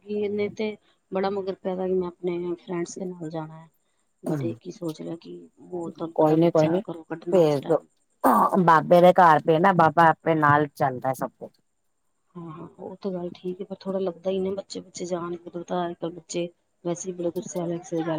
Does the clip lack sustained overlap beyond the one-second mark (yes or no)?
yes